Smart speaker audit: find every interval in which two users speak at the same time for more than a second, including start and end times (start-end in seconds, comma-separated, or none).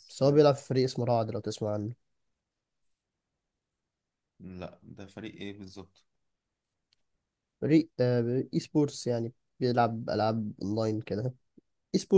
none